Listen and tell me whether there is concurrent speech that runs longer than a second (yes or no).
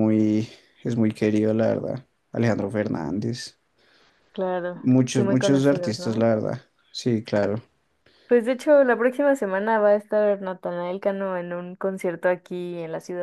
yes